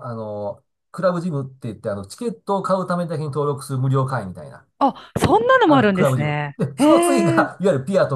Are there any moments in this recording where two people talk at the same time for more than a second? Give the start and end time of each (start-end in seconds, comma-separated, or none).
5.6-7.5